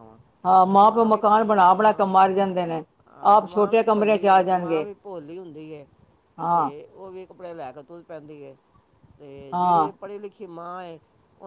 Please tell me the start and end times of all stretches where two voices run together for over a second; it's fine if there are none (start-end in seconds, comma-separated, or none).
3.3-4.8